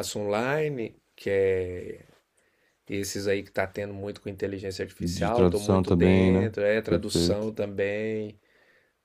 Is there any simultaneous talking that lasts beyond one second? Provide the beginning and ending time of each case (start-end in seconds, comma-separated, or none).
5.0-7.5